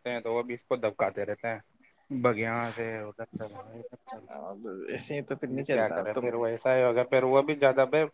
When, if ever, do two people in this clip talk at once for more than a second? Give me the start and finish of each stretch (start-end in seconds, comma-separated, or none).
4.2-6.3